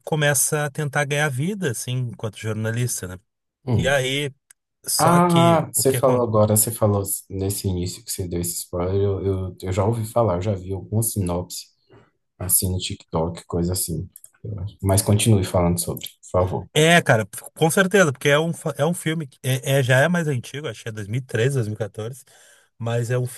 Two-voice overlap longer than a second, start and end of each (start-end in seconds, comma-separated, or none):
5.0-6.5